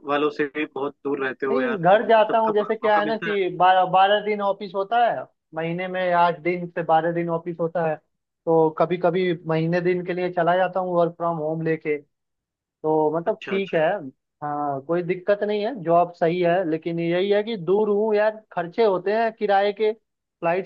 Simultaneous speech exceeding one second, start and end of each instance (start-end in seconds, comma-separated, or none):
1.5-3.4